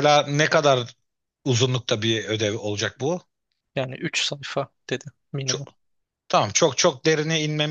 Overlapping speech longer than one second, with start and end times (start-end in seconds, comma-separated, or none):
none